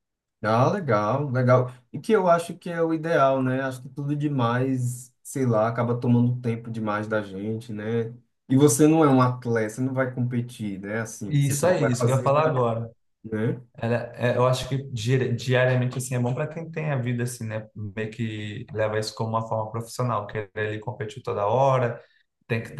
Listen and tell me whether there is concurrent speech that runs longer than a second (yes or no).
yes